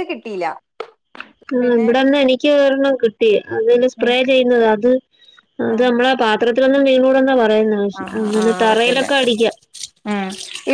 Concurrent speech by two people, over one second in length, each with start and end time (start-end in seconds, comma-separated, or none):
none